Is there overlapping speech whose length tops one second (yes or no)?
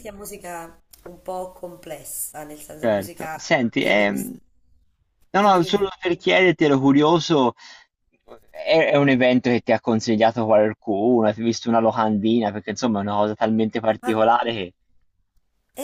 yes